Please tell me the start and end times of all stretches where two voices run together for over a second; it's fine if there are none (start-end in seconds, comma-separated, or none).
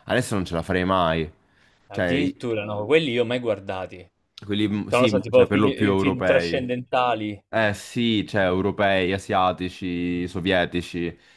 4.9-6.7